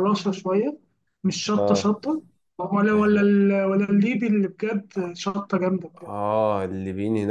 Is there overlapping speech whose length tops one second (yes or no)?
no